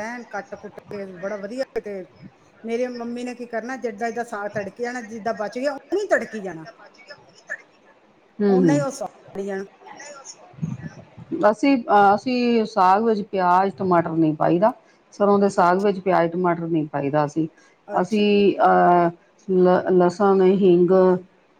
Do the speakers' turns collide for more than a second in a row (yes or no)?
no